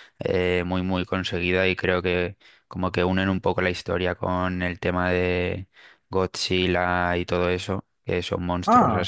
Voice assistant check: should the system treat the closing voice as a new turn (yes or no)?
no